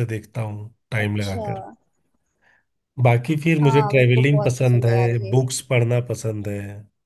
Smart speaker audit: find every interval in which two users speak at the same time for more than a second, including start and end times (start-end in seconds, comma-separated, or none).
3.6-5.3